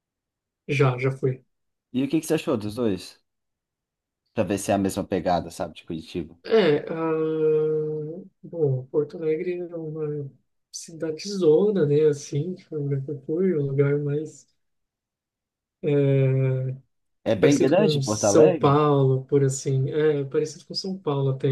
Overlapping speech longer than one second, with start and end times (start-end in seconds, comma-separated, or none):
17.4-18.8